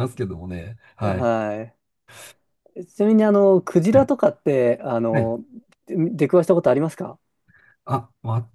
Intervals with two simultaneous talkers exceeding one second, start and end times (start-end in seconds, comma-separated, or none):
none